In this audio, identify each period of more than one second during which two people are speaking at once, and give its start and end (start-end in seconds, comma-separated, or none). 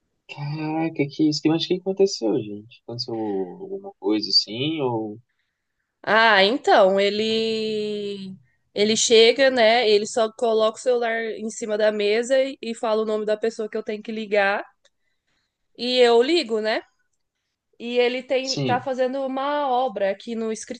none